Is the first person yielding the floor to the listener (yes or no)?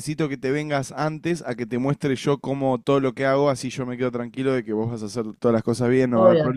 yes